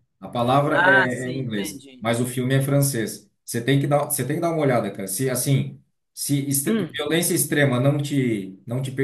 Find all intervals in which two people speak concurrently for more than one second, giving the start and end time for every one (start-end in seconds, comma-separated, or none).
0.7-2.1